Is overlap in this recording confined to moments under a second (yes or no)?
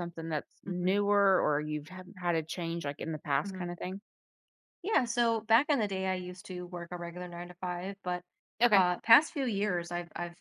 yes